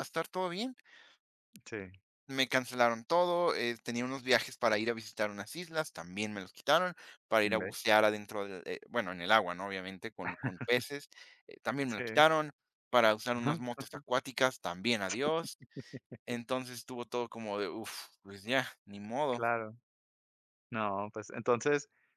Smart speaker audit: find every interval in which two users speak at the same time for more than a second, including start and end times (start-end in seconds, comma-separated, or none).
none